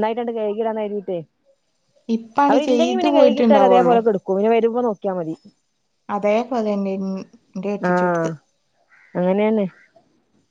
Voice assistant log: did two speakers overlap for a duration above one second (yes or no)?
yes